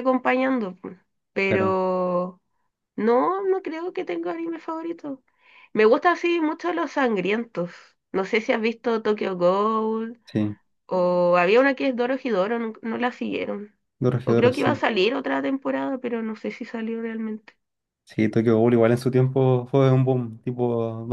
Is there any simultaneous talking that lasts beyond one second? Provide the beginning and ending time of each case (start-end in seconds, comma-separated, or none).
none